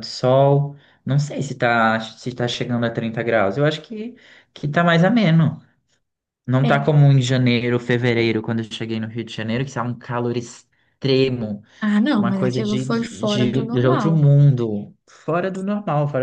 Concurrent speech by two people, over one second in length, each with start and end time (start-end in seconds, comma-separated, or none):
12.2-14.2